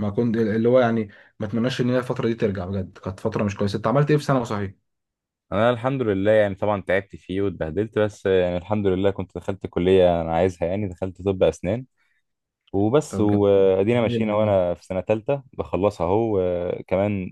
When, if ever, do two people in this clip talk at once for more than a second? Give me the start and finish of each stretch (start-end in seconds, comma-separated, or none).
13.1-14.6